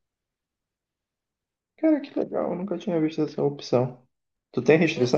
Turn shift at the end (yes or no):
yes